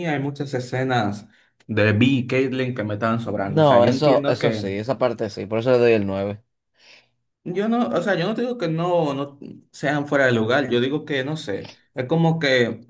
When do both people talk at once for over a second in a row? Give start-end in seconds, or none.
3.4-4.7